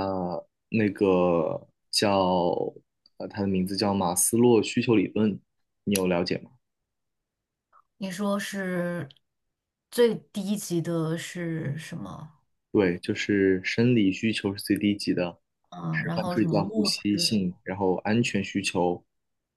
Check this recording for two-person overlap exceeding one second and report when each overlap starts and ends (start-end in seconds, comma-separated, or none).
15.9-17.4